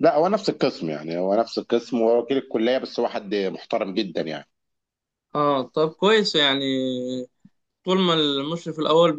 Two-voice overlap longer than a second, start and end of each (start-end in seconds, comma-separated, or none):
none